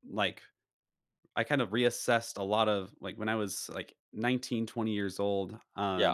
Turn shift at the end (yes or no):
no